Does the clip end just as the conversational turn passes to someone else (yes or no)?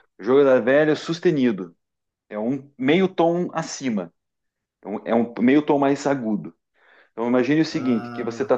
no